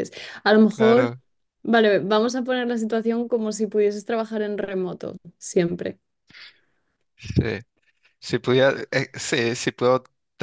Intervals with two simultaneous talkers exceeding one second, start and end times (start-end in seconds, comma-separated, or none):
none